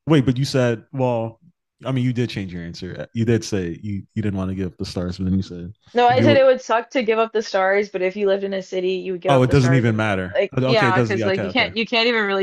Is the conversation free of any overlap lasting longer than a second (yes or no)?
no